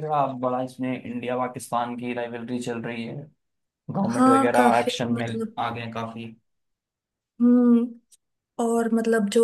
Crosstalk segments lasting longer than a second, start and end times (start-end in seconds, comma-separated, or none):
4.2-5.6